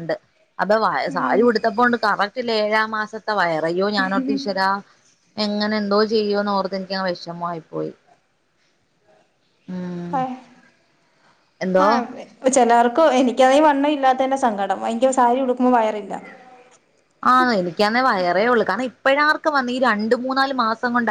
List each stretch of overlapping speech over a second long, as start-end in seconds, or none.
none